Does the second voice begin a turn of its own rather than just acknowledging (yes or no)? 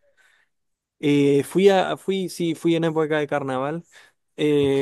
no